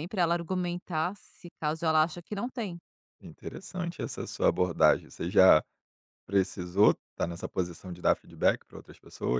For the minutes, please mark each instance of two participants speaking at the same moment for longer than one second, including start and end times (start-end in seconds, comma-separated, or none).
none